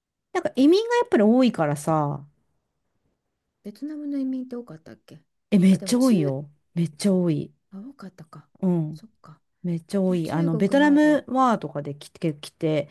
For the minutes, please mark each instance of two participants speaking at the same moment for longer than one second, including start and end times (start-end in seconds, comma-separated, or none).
10.1-11.2